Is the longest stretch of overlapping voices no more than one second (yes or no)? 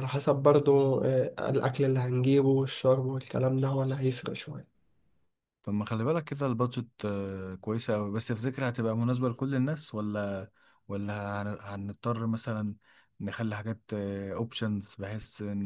yes